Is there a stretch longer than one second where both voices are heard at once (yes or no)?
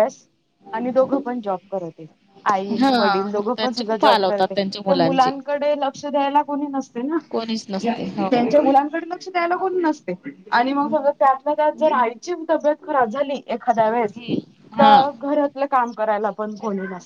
yes